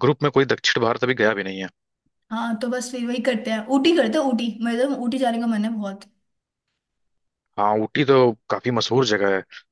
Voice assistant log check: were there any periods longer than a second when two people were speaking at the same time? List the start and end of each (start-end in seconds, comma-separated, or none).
none